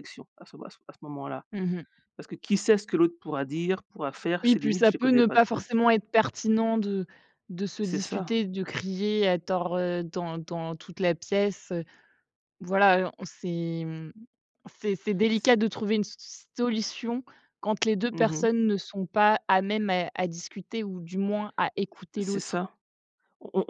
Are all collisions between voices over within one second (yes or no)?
no